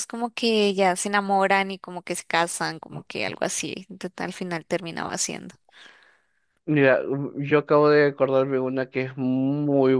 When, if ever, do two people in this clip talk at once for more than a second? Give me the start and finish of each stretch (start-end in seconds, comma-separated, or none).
none